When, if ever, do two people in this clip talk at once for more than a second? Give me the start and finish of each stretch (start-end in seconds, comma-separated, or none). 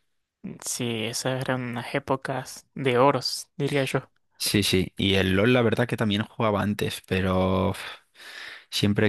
none